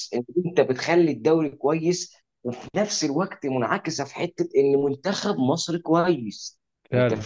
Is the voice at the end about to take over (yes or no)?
no